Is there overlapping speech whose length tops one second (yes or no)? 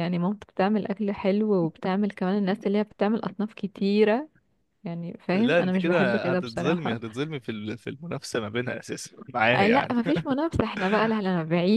yes